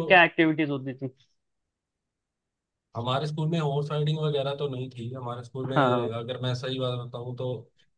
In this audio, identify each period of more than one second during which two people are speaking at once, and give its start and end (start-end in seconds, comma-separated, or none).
none